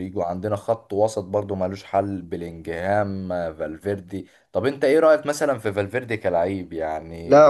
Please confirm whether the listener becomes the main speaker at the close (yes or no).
yes